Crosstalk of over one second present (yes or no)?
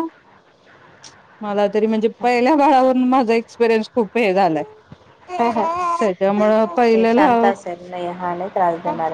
no